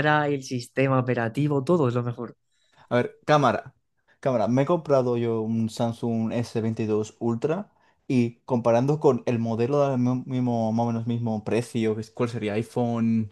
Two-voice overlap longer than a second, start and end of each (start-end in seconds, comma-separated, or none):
none